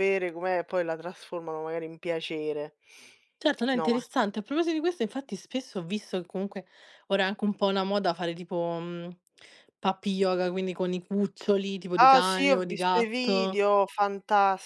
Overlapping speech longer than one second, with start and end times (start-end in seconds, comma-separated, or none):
12.1-13.6